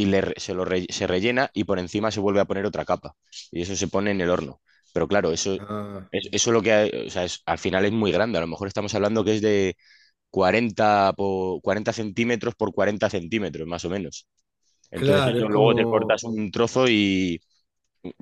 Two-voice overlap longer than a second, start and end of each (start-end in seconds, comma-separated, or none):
14.9-16.2